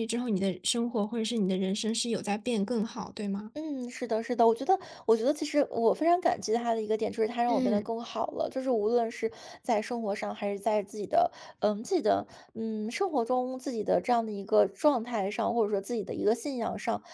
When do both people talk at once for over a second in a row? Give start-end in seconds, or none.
none